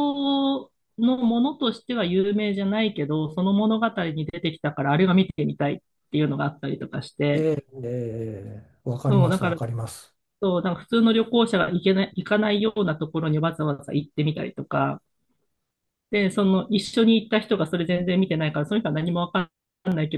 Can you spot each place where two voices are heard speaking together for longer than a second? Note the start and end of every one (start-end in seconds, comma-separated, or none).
none